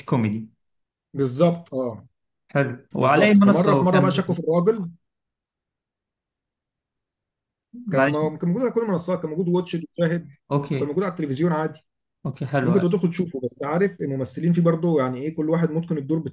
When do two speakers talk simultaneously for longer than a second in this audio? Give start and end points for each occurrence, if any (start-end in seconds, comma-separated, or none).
2.9-4.4